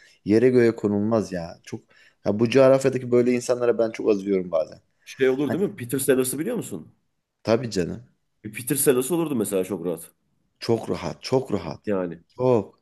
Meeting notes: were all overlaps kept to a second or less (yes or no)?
yes